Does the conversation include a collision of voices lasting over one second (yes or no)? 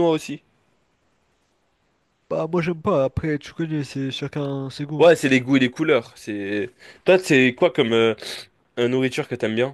no